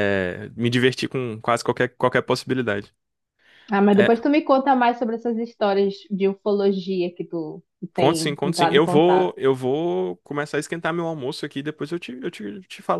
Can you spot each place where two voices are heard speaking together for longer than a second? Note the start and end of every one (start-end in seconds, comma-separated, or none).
8.0-9.3